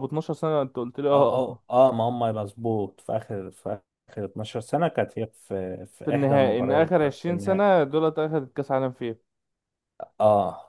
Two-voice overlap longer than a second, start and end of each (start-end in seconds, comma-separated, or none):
6.0-7.6